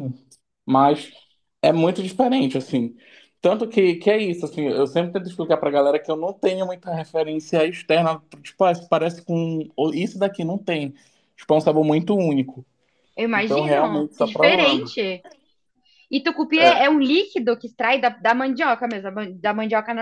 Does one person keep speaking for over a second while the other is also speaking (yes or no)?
yes